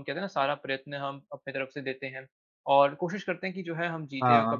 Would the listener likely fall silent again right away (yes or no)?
yes